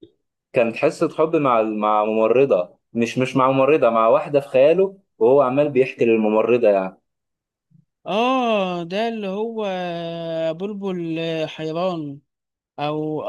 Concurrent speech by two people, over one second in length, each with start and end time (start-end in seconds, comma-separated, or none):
none